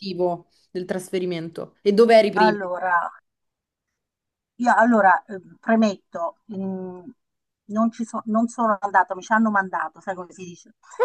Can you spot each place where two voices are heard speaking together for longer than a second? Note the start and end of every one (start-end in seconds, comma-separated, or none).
none